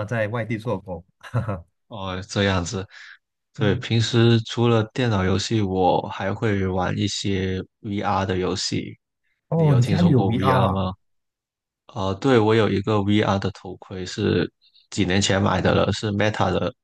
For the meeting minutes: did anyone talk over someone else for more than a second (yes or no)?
yes